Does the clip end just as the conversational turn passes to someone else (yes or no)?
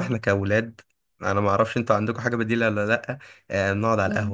no